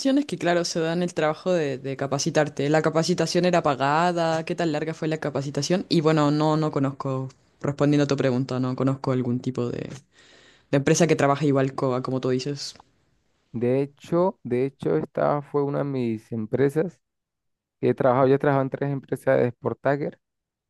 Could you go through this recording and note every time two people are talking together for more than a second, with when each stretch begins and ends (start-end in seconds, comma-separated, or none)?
none